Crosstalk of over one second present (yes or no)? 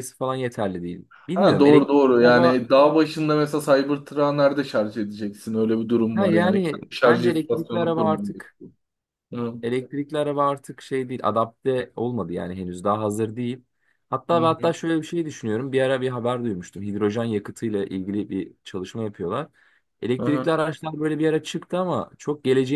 yes